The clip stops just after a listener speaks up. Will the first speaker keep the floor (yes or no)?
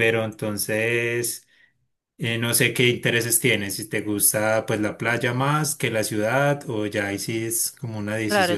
no